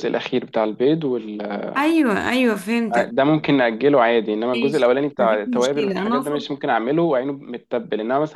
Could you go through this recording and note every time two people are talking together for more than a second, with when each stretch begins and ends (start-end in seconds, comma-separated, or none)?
4.5-6.5